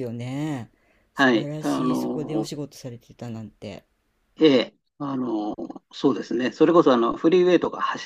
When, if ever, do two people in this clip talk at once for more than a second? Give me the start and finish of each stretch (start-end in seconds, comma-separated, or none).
1.1-2.5